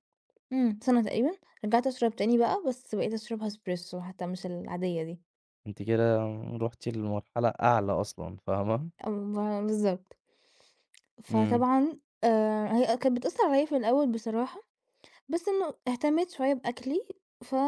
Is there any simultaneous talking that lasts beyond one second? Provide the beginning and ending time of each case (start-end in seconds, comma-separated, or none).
none